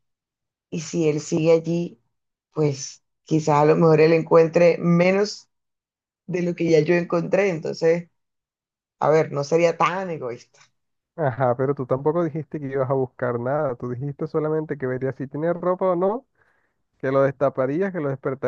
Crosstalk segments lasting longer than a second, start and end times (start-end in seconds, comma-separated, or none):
none